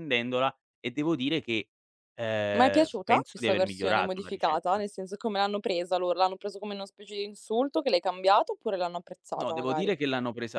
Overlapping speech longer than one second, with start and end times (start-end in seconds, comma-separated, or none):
2.5-4.8